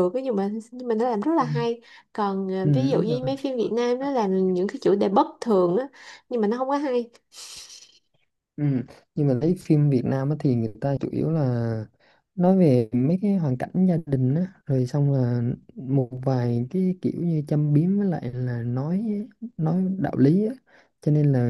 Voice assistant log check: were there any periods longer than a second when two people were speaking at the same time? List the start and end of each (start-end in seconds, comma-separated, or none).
none